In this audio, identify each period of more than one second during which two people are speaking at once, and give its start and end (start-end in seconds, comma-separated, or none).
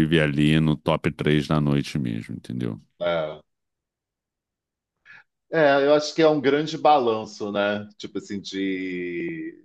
none